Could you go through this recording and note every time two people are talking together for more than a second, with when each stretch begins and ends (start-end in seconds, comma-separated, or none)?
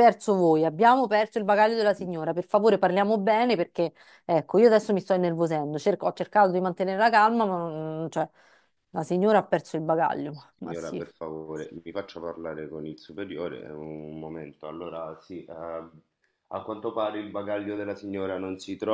none